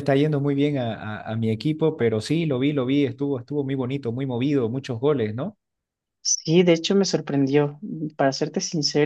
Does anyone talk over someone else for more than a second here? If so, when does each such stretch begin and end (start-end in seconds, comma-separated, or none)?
none